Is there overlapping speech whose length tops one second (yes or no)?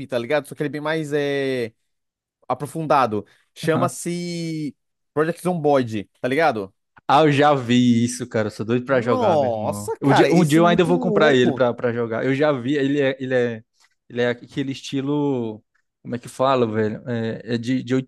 yes